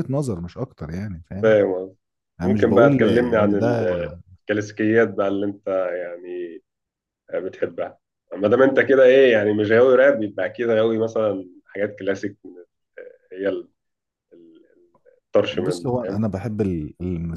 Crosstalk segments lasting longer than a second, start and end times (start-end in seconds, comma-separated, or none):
2.4-3.9